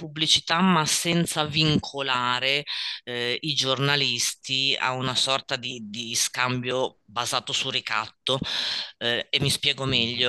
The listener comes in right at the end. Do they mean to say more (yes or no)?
no